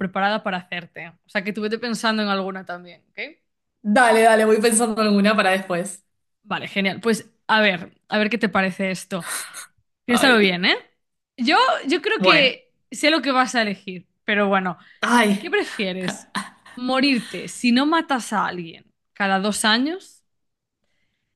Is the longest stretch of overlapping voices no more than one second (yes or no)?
yes